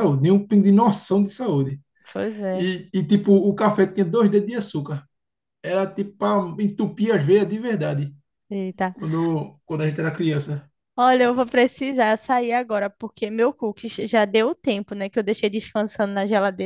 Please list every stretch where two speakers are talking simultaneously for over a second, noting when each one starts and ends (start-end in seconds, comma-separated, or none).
none